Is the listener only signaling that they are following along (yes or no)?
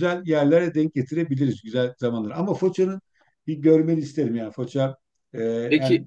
yes